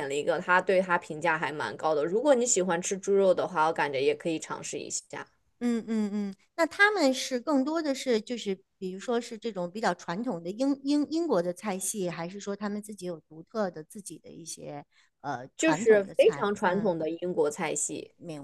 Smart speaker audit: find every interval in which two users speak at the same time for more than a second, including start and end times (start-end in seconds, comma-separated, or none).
15.6-16.9